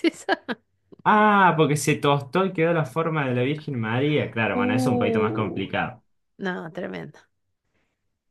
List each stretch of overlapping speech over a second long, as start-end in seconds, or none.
4.5-5.7